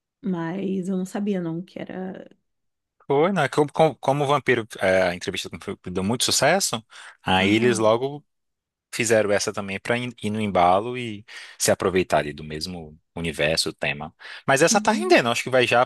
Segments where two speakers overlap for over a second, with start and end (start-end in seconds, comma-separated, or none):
none